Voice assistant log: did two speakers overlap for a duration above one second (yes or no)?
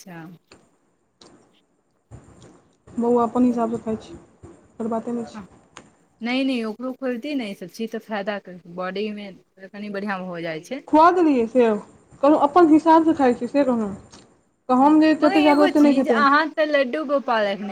yes